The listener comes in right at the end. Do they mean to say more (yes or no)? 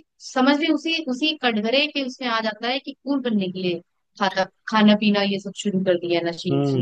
yes